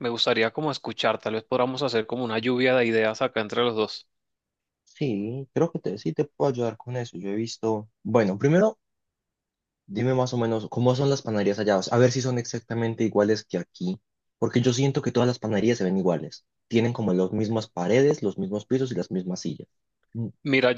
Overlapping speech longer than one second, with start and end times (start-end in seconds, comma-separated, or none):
none